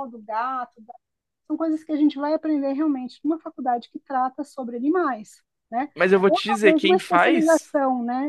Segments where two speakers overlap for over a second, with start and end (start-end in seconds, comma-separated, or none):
6.3-7.7